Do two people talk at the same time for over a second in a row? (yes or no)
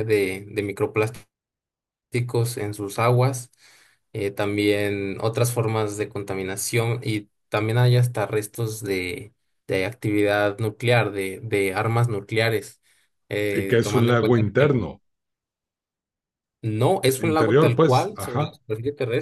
yes